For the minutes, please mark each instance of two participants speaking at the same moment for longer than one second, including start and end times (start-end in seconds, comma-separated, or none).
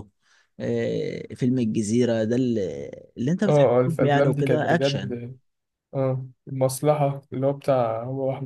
3.5-5.1